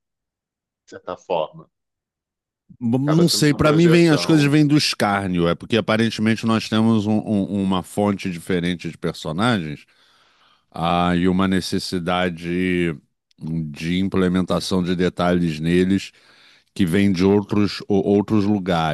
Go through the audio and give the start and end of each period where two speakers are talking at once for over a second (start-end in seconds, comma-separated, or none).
3.0-4.6